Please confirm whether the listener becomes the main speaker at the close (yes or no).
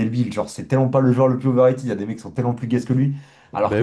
no